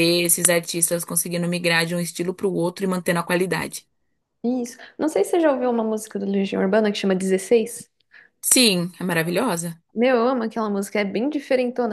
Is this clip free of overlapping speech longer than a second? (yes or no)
yes